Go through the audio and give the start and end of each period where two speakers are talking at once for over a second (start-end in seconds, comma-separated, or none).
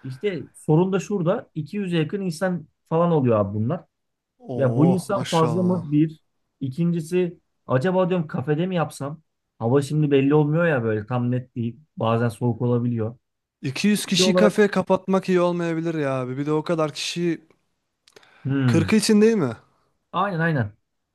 4.5-5.8